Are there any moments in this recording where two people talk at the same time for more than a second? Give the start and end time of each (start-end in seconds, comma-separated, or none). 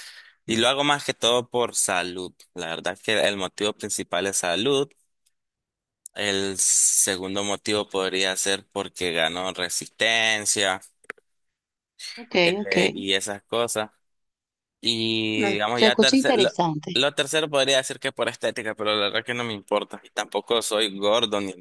15.3-17.1